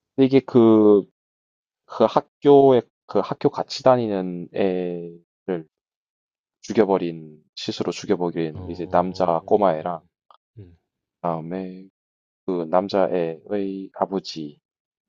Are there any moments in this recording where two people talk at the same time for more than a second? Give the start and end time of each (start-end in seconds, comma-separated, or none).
8.5-9.9